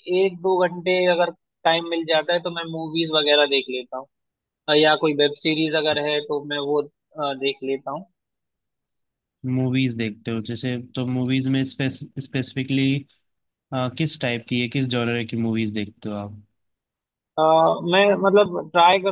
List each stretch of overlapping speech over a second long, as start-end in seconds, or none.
none